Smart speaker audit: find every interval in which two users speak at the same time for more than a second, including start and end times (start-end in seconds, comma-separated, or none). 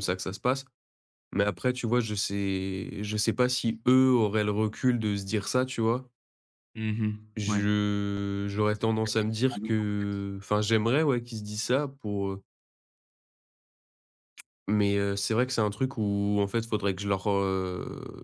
9.0-10.2